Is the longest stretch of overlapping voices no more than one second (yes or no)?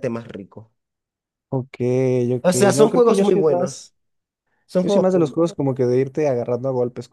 no